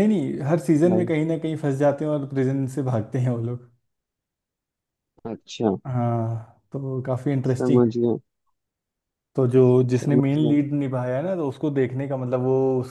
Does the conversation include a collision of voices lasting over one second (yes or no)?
no